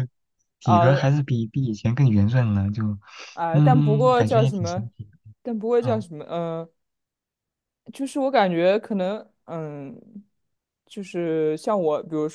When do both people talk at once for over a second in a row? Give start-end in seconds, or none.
3.5-4.9